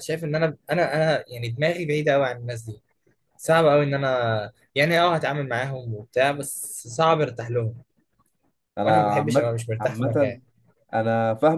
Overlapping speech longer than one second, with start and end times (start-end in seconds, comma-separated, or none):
8.8-10.4